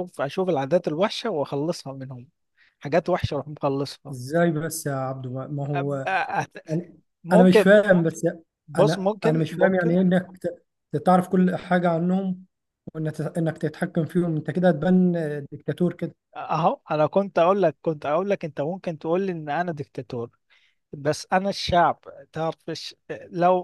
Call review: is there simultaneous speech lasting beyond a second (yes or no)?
yes